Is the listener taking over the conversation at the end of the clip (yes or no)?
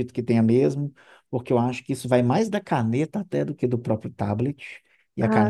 no